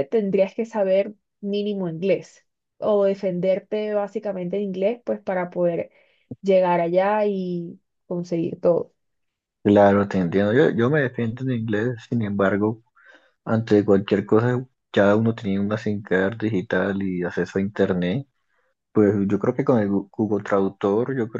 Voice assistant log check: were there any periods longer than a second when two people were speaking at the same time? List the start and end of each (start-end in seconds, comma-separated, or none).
none